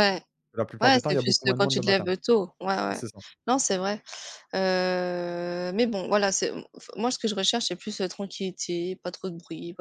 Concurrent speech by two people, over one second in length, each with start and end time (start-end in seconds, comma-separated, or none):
0.8-2.1